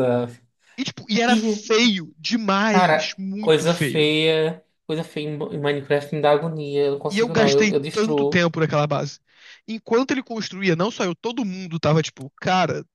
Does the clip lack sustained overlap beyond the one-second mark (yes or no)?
no